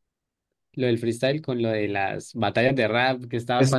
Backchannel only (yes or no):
yes